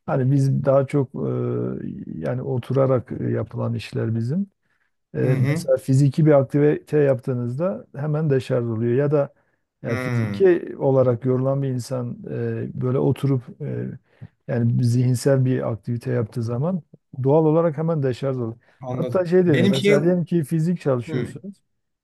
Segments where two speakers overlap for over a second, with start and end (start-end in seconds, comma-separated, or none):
18.8-20.4